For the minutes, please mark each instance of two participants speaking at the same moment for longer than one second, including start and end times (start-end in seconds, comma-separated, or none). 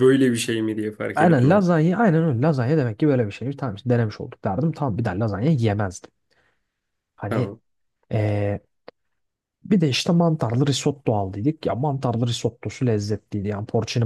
none